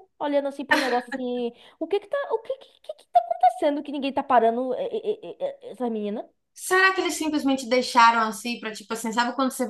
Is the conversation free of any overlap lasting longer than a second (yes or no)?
yes